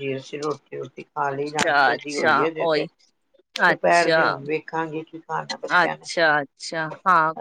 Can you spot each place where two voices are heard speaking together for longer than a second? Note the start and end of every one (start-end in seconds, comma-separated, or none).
1.3-2.9